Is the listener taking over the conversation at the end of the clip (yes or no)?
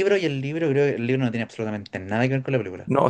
yes